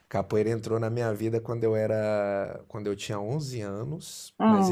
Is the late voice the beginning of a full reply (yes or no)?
no